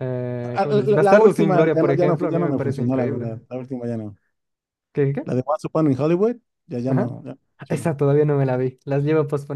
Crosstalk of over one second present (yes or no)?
yes